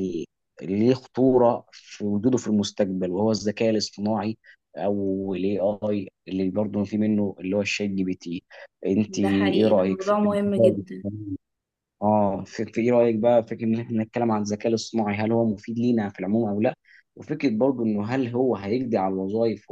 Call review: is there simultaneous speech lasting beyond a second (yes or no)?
yes